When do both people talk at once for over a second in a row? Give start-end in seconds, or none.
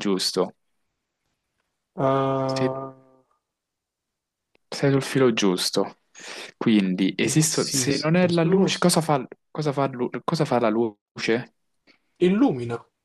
7.2-8.9